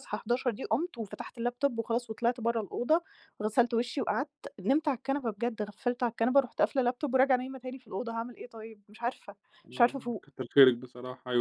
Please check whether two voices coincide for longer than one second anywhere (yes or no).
no